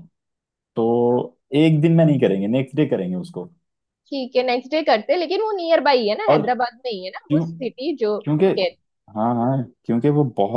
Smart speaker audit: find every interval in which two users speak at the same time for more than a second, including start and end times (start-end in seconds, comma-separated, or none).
none